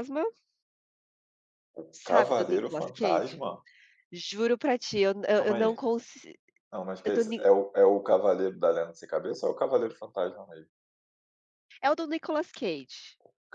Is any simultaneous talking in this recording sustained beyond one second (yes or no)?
yes